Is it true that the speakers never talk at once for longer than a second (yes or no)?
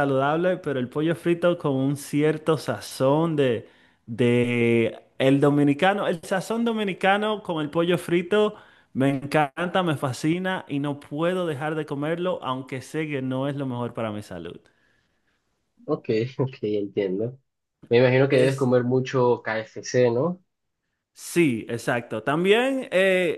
yes